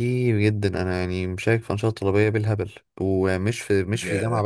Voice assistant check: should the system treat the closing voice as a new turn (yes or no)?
no